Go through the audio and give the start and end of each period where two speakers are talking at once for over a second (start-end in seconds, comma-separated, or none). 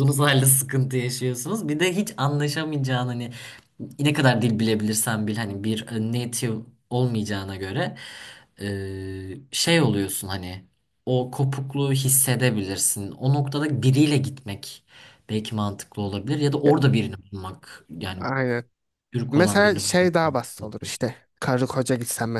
19.3-21.0